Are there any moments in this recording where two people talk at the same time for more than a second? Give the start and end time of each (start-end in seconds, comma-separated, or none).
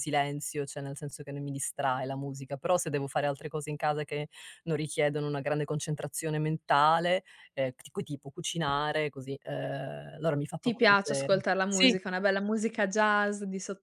10.6-12.0